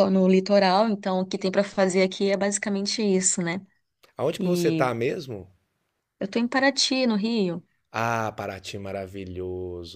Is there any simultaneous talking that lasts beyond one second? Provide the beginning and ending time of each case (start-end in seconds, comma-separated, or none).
none